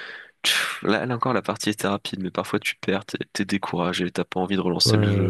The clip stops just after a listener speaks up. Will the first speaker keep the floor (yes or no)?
no